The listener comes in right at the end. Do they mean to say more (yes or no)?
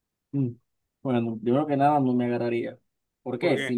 no